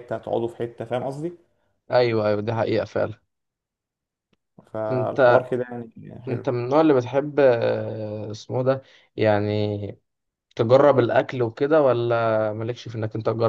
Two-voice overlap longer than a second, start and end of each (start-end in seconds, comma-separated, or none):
none